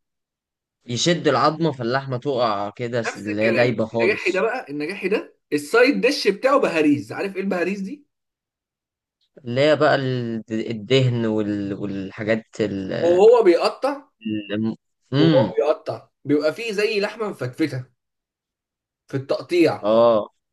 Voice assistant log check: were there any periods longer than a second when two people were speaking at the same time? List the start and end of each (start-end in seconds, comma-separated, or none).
3.1-4.5